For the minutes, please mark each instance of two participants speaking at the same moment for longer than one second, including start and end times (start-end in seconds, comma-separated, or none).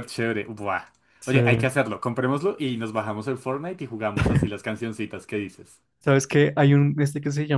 none